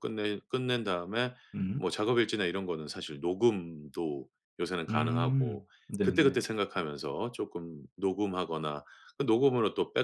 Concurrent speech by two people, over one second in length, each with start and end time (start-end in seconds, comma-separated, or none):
4.9-6.4